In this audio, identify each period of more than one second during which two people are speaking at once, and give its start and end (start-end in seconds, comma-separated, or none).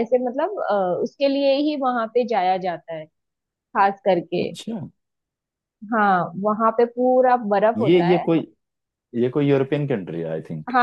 none